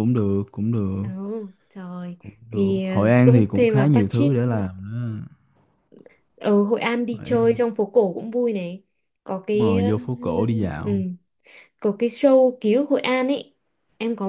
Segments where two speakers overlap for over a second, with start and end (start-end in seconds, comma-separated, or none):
2.2-4.3